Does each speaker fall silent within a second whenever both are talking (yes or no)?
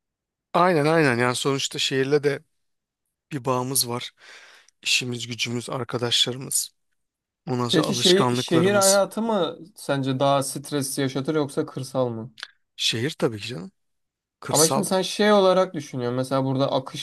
no